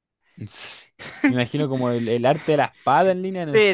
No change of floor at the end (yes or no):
no